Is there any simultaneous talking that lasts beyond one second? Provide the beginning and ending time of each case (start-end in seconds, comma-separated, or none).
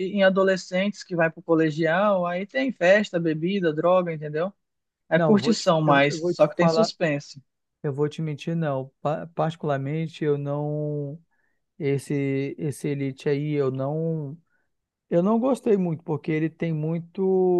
5.1-6.9